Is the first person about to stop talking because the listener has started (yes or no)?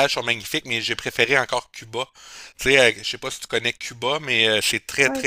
no